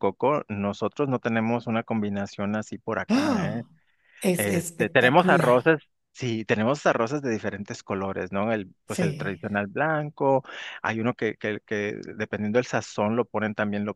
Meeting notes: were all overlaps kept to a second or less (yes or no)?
no